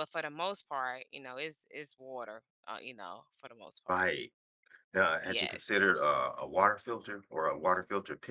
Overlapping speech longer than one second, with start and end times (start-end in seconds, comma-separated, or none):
none